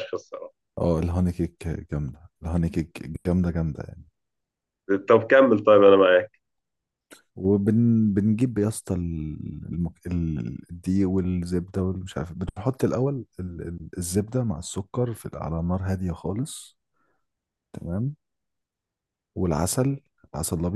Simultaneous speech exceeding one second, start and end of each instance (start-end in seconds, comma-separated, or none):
none